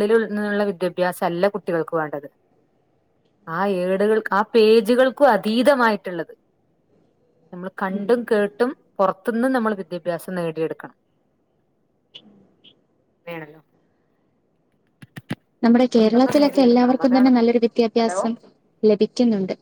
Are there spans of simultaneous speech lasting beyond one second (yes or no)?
yes